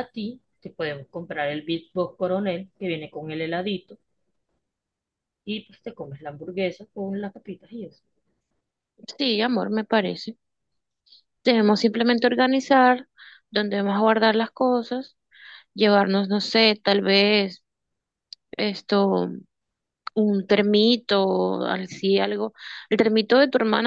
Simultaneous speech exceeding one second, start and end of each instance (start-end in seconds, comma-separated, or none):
none